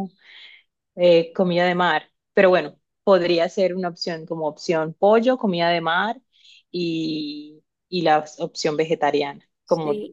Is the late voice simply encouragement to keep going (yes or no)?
no